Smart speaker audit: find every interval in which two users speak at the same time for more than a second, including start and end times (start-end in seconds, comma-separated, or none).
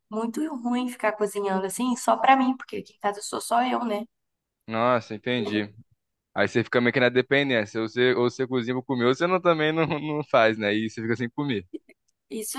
none